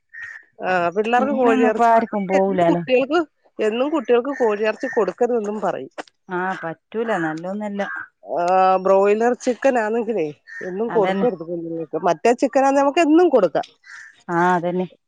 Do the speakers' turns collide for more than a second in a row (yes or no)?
yes